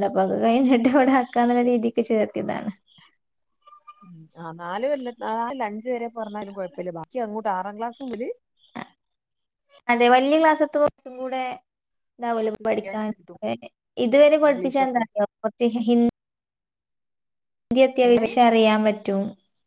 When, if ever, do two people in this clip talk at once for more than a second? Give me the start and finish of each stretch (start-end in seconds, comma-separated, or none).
none